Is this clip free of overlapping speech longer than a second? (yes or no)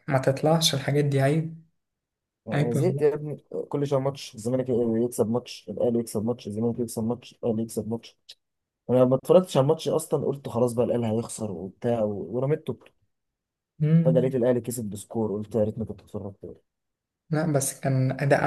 yes